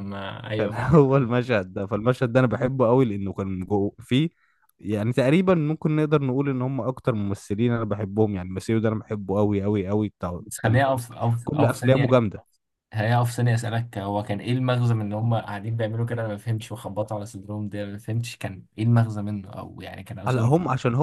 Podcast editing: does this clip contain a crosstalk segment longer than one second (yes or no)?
yes